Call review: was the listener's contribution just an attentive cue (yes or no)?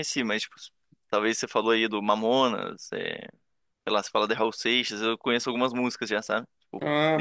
no